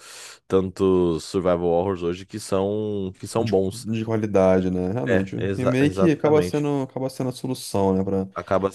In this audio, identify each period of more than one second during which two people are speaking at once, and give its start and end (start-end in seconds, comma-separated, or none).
5.1-6.6